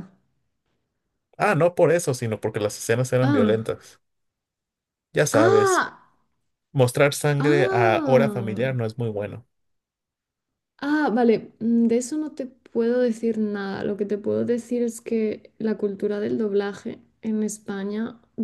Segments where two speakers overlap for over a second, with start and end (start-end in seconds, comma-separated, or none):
7.4-8.8